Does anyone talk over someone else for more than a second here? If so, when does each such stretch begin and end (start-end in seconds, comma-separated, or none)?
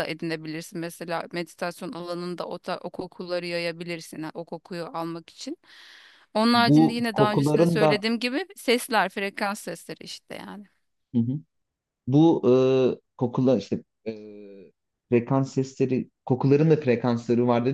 6.5-8.0